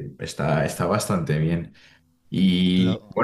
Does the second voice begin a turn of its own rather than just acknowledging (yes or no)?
no